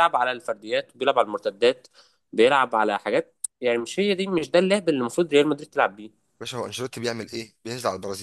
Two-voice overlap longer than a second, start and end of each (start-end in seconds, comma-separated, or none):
none